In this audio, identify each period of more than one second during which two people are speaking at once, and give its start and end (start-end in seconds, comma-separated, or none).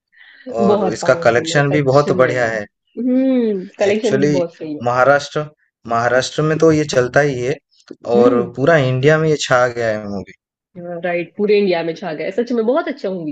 0.6-2.5